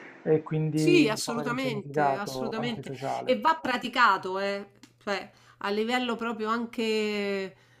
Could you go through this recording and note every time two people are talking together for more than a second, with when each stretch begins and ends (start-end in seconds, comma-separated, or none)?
0.7-3.4